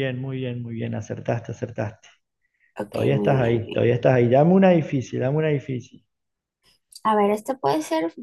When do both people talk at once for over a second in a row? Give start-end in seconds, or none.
2.9-4.2